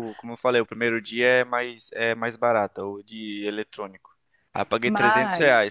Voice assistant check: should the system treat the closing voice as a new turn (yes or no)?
no